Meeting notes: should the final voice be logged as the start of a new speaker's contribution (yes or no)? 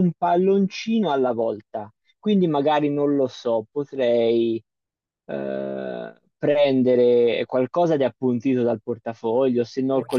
no